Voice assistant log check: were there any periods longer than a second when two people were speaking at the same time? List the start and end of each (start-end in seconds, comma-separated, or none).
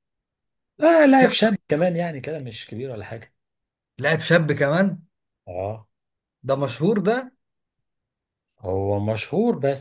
none